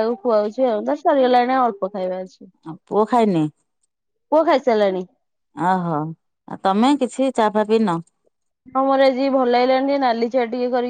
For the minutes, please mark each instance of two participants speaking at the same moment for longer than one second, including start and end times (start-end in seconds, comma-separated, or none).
none